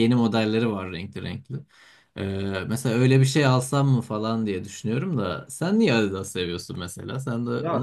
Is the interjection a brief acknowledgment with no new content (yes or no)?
no